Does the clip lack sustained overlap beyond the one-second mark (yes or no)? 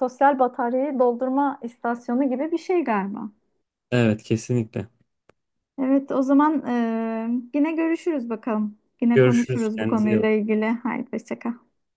no